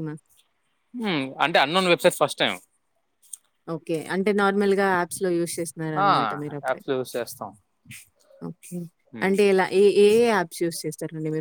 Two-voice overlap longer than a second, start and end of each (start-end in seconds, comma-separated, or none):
none